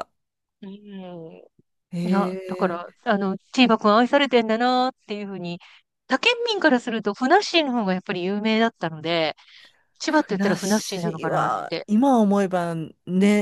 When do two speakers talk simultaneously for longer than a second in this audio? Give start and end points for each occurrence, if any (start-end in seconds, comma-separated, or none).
10.0-11.9